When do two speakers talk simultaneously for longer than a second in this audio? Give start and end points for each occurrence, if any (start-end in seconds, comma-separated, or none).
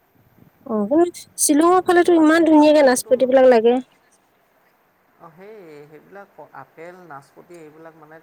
1.5-3.1